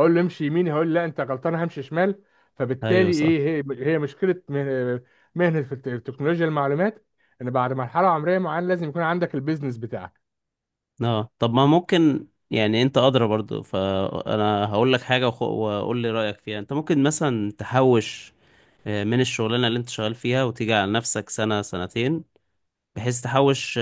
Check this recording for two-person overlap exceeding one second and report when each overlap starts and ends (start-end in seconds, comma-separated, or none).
none